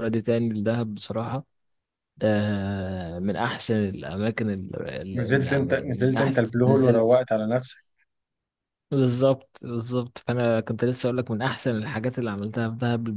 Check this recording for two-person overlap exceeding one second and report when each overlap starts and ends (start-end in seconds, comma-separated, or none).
5.2-7.2